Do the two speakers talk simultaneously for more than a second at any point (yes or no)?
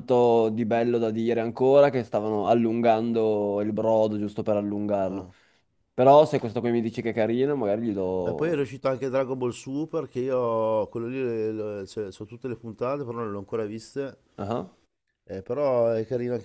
no